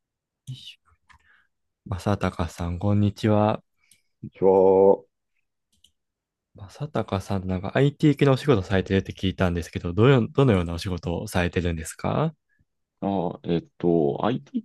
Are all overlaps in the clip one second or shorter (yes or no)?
yes